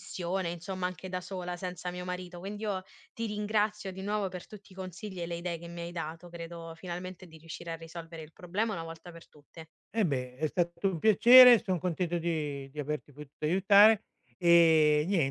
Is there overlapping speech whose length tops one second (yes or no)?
no